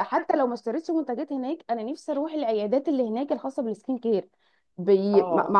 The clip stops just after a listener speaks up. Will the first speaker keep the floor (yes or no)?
yes